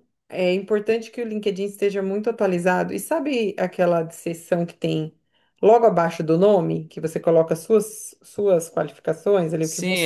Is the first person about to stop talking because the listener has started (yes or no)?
yes